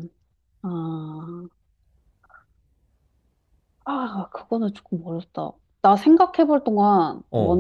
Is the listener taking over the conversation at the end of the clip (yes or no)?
yes